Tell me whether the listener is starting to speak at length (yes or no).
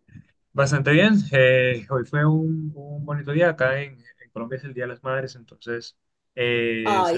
no